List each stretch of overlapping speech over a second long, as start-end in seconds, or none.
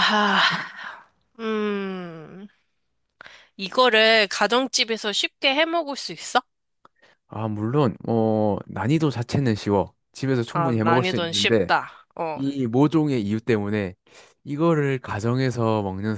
10.5-11.7